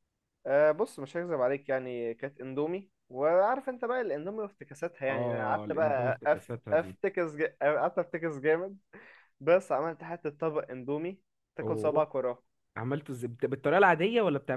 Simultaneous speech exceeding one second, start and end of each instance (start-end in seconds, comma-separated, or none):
5.1-7.0